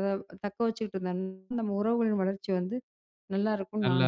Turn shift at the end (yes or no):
yes